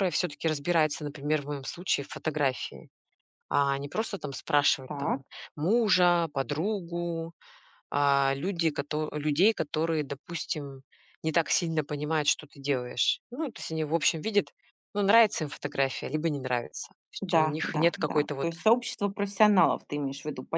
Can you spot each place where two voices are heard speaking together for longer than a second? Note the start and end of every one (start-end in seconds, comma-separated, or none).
17.2-18.5